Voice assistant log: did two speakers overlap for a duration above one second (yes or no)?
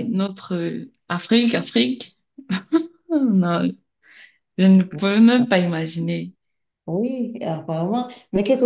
no